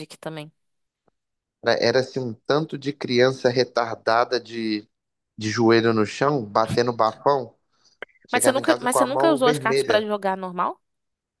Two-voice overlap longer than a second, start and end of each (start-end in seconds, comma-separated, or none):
8.3-10.1